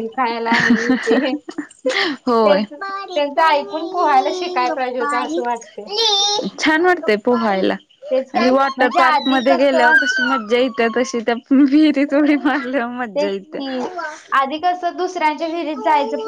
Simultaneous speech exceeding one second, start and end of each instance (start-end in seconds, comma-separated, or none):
8.4-10.0